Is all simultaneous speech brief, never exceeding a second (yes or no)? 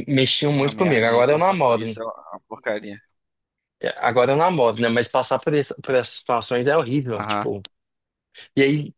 no